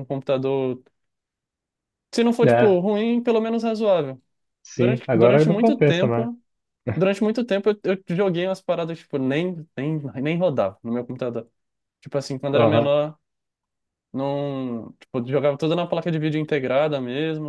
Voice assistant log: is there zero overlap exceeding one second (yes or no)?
no